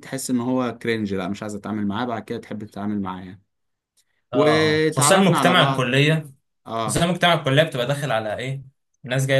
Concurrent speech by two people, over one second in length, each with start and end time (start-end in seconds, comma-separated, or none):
4.3-5.9